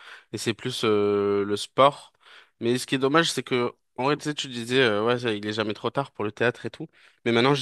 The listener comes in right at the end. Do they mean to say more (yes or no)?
no